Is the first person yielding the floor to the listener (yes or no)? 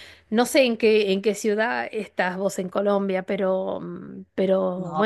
yes